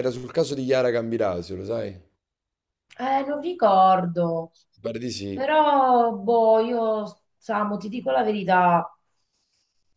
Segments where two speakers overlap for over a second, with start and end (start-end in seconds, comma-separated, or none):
none